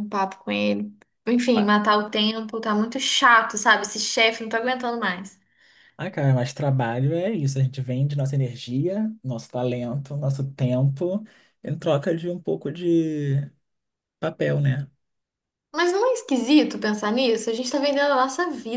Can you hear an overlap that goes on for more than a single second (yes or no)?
no